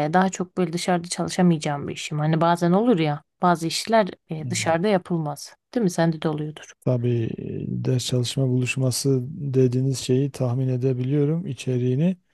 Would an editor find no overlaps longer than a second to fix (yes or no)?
yes